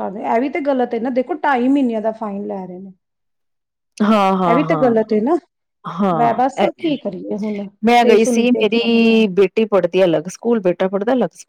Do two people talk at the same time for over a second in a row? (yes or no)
yes